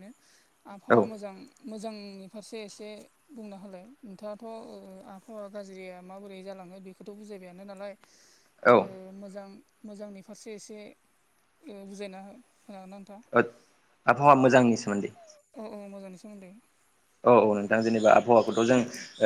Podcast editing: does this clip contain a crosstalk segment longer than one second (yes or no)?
no